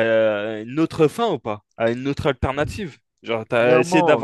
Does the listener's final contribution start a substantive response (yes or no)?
yes